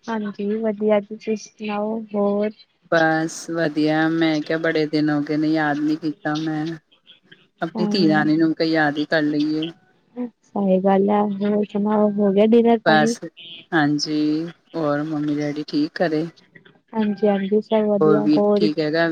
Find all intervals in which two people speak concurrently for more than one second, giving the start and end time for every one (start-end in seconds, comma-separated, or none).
none